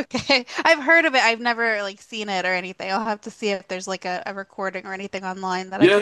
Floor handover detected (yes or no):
yes